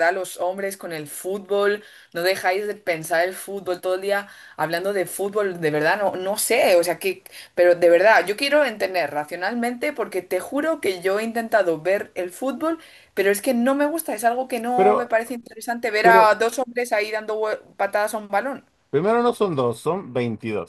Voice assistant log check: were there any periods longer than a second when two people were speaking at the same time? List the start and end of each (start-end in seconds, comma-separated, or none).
none